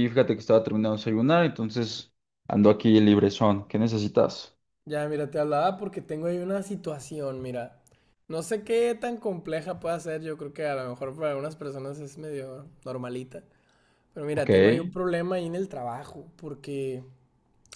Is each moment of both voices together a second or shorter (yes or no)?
yes